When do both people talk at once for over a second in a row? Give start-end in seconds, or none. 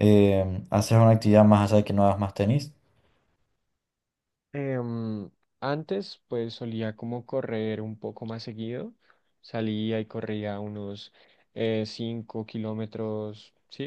none